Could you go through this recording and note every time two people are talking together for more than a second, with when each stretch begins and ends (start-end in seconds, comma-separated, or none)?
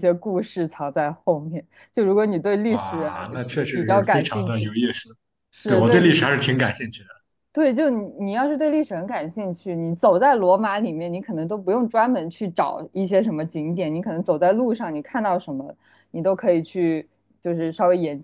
2.7-4.7